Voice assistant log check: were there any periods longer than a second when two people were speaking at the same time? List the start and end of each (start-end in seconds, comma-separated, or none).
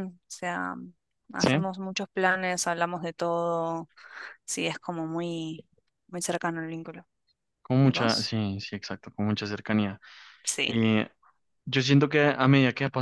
none